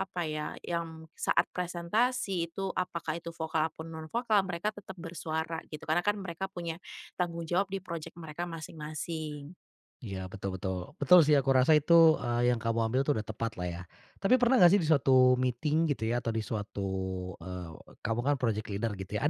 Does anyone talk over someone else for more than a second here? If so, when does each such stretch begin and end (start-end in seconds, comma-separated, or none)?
none